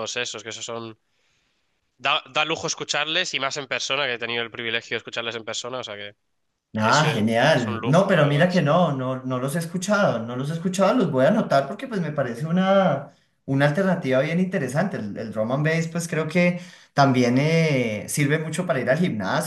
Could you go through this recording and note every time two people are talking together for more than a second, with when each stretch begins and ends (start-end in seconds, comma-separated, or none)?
6.8-8.7